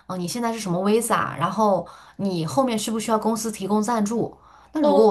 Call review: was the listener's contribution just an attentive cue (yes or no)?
yes